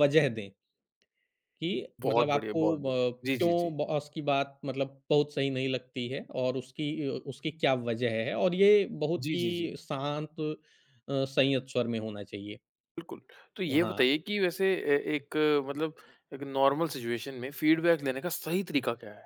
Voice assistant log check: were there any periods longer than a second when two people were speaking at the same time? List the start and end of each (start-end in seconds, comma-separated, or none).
2.1-3.7